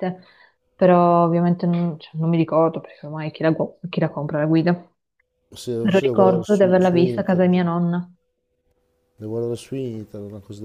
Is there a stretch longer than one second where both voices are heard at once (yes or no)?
yes